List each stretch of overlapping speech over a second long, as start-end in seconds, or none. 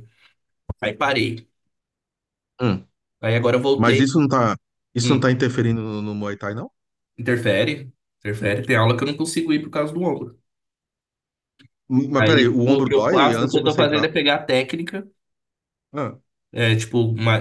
12.2-14.1